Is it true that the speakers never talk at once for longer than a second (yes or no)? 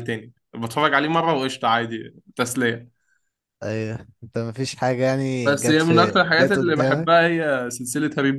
no